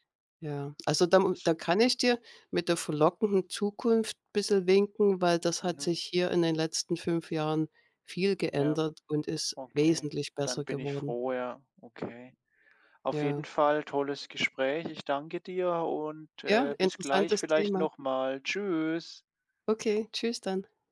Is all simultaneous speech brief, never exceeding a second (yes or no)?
no